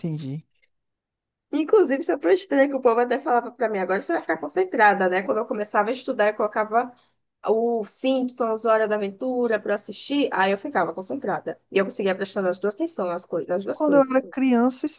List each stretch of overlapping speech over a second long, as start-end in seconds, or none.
none